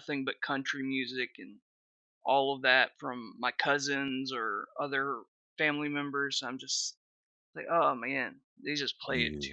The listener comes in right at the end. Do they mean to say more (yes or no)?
no